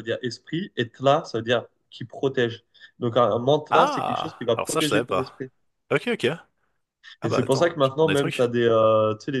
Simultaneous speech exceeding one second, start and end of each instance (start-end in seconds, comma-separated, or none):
3.7-5.5, 7.2-8.4